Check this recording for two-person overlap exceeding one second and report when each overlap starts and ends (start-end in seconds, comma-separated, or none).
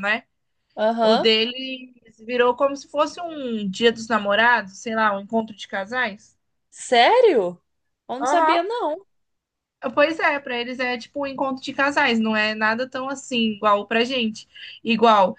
none